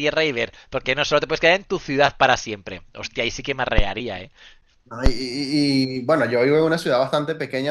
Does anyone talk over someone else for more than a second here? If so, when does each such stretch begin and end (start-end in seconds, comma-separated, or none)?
none